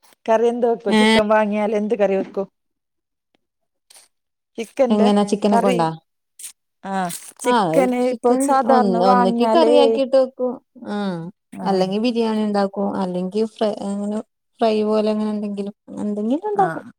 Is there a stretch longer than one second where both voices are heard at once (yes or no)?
yes